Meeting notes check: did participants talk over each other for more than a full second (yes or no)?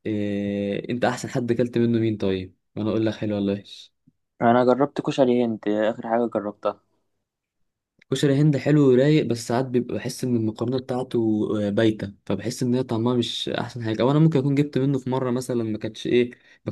no